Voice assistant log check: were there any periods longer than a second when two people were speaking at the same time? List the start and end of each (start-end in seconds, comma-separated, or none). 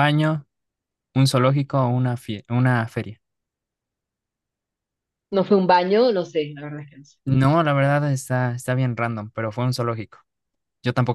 none